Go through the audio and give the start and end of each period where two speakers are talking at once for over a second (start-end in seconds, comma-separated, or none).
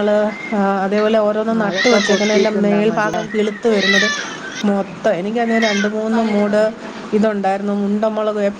1.6-3.2